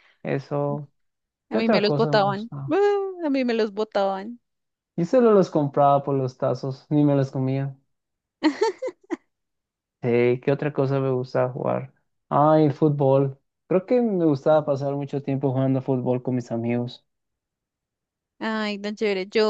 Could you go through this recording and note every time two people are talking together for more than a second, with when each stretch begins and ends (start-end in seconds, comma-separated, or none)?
1.5-2.8